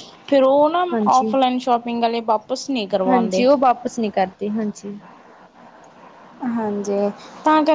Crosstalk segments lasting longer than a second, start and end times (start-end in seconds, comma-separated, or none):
none